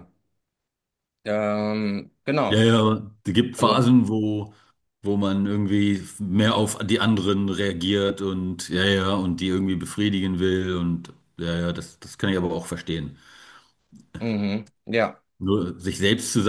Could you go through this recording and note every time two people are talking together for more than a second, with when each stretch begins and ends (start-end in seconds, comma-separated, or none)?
none